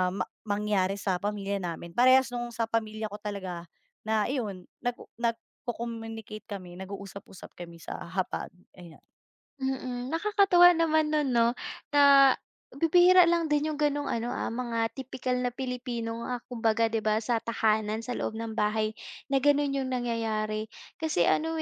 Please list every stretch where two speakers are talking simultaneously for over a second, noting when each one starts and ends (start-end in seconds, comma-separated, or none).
none